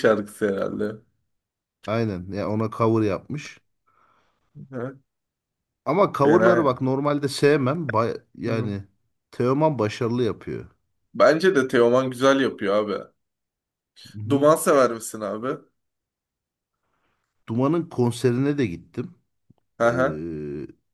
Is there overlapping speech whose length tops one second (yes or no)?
no